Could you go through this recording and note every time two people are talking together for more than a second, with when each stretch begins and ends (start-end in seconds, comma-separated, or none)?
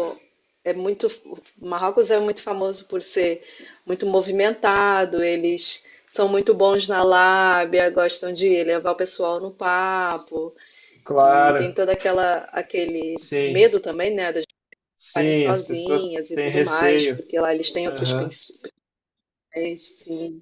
15.0-17.2